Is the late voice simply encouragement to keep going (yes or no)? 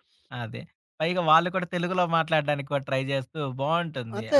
no